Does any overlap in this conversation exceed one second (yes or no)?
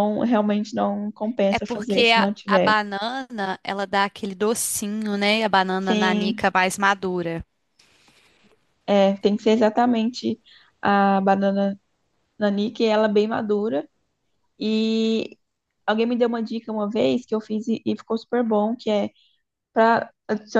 yes